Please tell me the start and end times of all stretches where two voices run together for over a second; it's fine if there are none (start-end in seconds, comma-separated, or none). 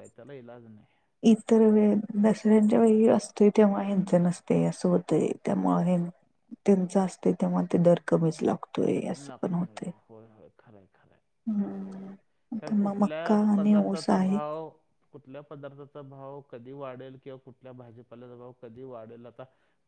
12.6-14.4